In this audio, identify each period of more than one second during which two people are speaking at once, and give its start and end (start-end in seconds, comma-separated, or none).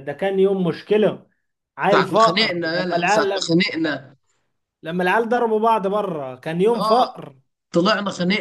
1.9-3.5